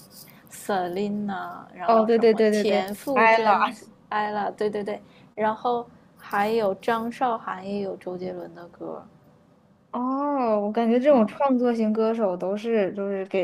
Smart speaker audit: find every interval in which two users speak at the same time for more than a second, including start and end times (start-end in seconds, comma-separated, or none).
1.9-3.7